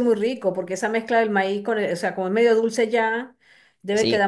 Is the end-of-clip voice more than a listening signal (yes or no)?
no